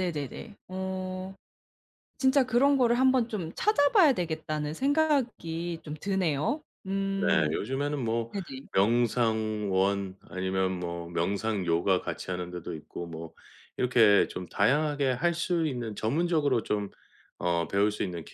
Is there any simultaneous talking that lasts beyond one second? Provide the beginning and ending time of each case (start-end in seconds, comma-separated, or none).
none